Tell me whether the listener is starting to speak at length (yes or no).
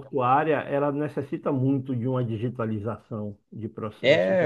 yes